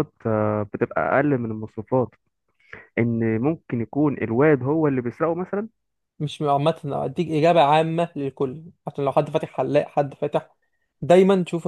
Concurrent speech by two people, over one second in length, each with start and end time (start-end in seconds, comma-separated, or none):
none